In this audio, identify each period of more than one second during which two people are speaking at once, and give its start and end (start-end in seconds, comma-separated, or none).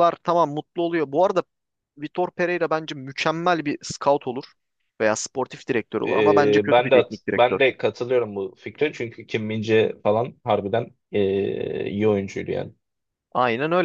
6.1-7.7